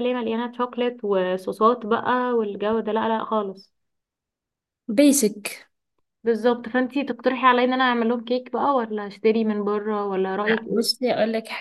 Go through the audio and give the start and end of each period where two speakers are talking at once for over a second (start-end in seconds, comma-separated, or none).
none